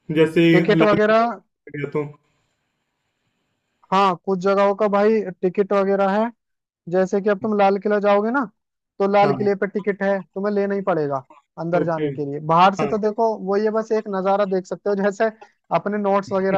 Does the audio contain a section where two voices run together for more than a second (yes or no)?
no